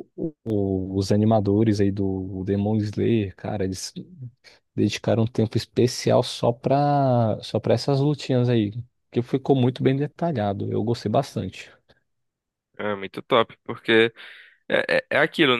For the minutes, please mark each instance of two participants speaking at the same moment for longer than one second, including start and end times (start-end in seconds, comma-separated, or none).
none